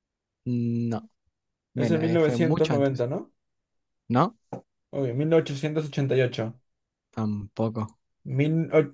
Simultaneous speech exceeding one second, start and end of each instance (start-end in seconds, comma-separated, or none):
1.8-3.0